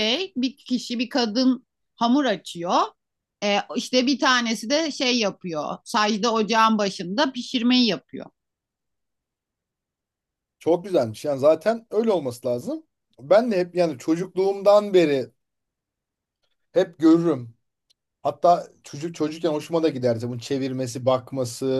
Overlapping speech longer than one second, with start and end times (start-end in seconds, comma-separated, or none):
none